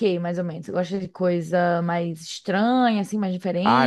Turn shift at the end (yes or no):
yes